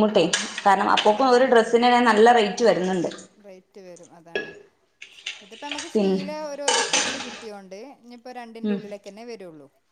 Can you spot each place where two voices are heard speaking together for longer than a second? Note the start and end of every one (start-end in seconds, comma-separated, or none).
none